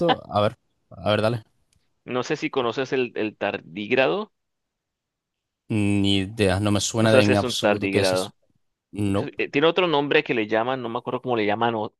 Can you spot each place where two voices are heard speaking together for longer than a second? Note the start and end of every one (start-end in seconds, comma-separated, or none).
7.0-8.3